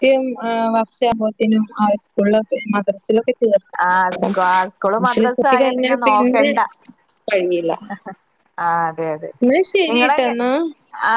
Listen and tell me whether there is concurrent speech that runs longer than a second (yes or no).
yes